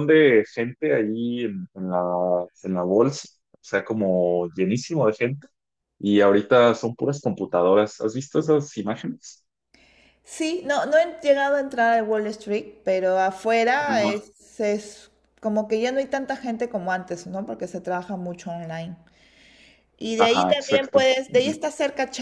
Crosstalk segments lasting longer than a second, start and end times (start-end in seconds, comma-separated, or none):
20.2-21.6